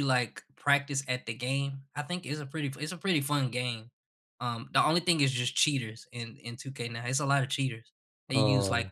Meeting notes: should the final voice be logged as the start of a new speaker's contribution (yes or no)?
no